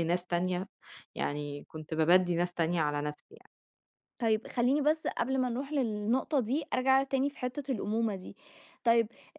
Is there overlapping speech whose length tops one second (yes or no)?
no